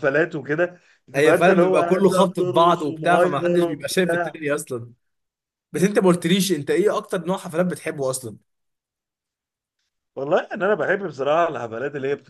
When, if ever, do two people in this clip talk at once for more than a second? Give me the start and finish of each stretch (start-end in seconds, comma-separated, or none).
1.1-4.4